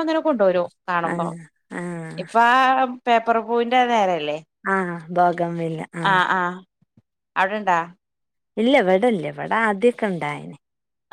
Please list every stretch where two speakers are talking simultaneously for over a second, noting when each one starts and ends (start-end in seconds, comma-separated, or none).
none